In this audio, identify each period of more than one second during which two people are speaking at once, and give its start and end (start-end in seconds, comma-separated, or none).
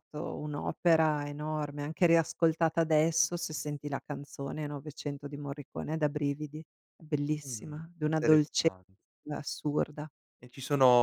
7.4-8.7